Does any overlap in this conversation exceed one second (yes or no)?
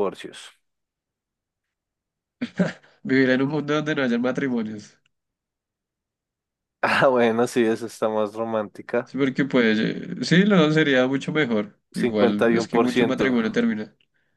yes